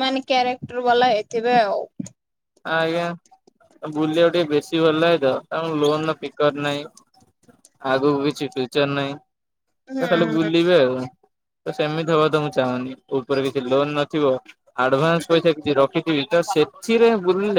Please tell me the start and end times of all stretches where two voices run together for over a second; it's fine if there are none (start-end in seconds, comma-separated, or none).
none